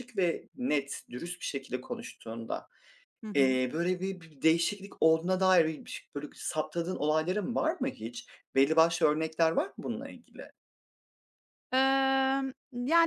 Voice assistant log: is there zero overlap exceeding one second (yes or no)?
yes